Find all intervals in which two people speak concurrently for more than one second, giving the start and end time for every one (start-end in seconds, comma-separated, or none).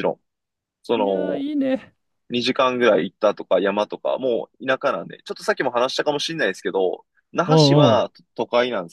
none